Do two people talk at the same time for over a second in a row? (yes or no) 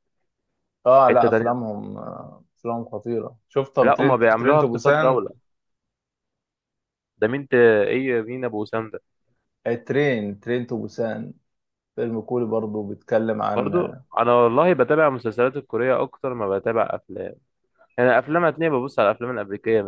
yes